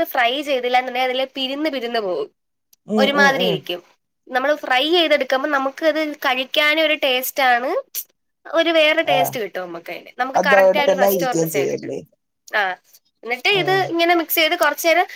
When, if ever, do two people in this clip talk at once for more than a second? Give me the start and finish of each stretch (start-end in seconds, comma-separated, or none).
10.4-11.9